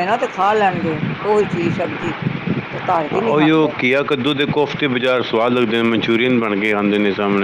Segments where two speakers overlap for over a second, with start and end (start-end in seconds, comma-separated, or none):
none